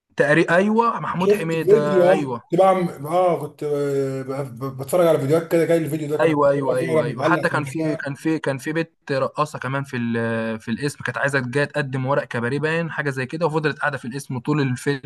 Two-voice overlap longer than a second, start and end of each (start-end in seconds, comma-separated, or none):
1.2-2.4, 6.2-8.1